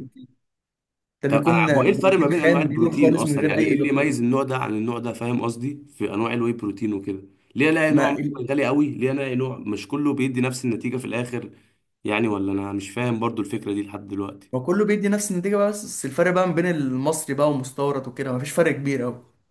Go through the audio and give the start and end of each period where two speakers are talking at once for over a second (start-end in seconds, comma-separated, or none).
1.3-4.2